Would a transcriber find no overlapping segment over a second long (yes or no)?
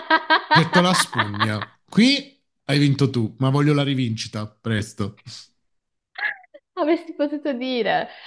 yes